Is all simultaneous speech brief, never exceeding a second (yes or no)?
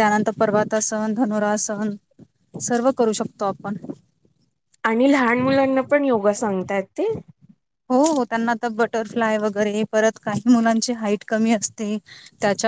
yes